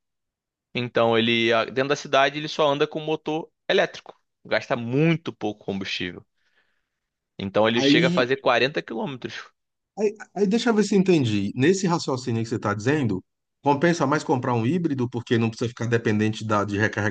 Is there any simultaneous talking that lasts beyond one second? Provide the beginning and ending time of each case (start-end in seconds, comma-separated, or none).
none